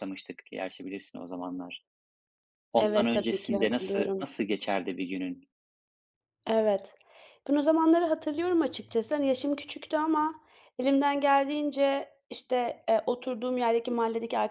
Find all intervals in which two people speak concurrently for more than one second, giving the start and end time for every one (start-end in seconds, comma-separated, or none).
2.8-4.2